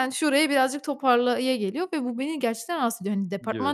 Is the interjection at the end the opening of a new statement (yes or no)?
no